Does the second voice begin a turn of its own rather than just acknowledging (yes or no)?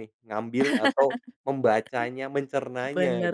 yes